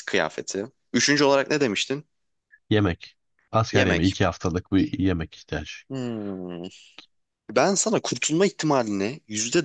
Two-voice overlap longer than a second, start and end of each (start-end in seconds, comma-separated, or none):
none